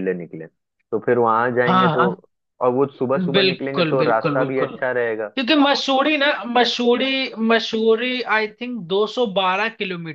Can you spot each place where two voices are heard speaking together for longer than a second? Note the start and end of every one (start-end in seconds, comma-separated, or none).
3.3-4.8